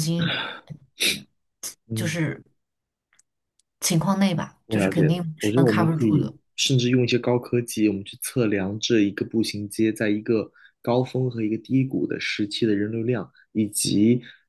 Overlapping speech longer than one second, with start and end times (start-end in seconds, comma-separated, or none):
4.7-6.3